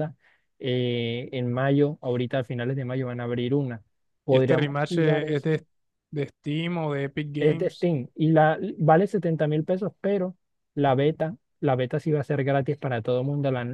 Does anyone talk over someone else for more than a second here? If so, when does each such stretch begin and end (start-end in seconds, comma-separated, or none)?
4.3-5.5